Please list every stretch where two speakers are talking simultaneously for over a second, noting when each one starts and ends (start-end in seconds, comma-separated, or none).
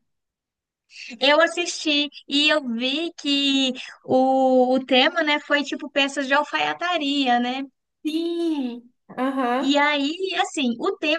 none